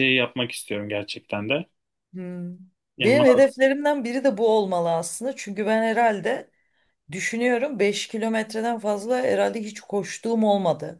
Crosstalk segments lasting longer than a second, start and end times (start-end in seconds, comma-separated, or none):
none